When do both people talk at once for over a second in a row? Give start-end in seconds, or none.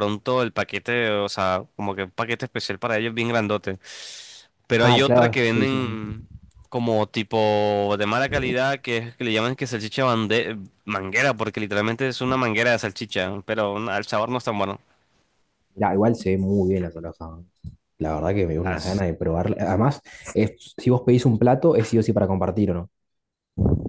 4.8-6.0